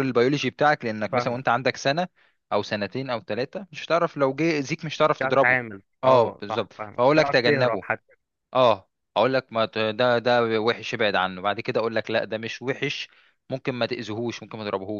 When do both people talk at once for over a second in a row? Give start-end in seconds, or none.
5.0-7.8